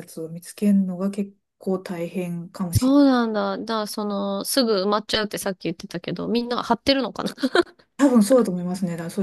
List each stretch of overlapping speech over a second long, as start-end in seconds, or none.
none